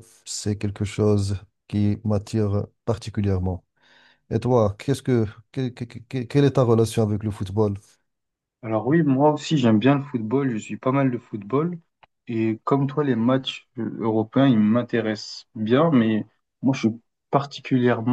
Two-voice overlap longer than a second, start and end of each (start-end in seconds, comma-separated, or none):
none